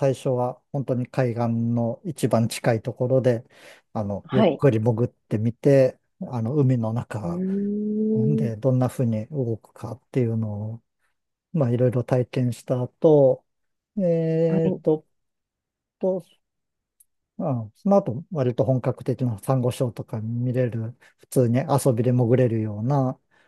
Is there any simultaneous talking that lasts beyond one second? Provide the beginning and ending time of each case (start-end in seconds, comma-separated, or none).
none